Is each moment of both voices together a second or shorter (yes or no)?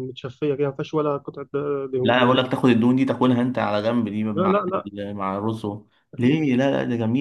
yes